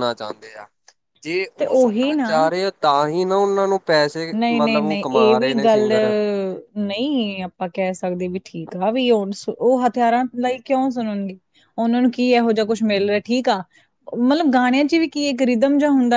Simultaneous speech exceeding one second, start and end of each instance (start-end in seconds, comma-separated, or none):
4.4-5.9